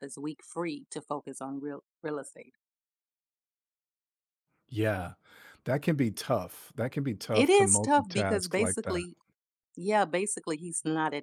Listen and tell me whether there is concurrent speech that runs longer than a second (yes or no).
yes